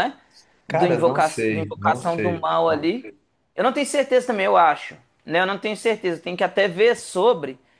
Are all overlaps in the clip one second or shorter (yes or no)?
no